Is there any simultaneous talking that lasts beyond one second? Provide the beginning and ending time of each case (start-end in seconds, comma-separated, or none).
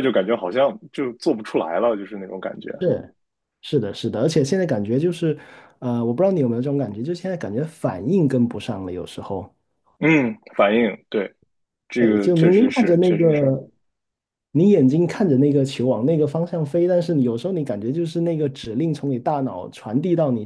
12.0-13.5